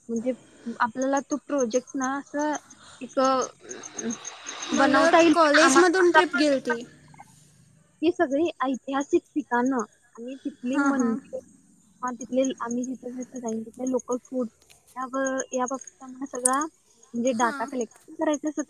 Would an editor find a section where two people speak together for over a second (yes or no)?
yes